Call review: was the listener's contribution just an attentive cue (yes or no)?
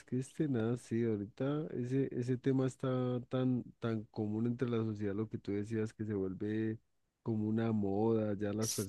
yes